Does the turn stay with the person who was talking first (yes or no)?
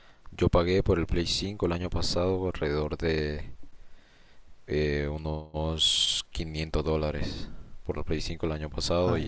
yes